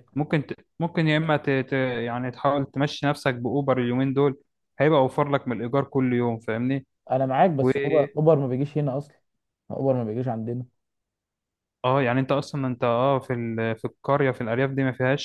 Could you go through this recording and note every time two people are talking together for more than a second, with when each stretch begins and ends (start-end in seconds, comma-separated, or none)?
none